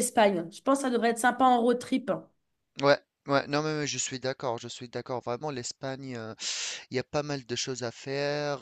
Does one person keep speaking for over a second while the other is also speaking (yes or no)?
no